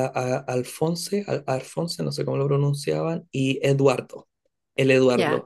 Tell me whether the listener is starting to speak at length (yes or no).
yes